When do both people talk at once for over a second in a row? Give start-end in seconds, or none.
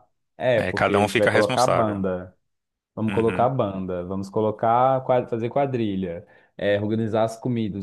0.6-2.0